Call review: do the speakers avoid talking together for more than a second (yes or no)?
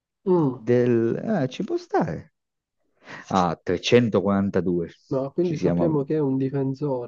yes